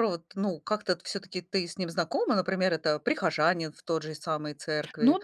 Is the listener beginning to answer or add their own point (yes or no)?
yes